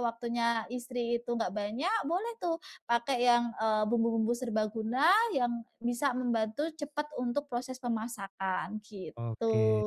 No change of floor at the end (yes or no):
no